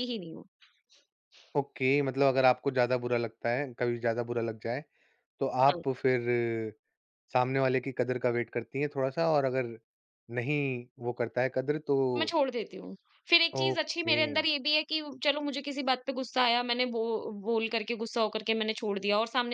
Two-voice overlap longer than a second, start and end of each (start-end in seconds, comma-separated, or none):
none